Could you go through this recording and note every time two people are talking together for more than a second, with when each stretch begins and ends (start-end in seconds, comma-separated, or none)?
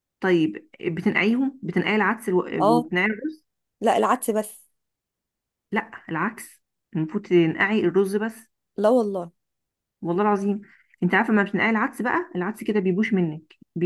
none